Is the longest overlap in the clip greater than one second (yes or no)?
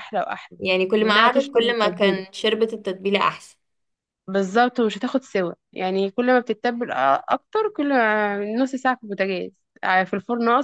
yes